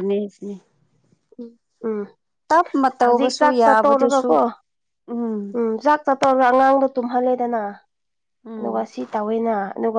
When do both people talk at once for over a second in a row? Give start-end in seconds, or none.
3.0-4.3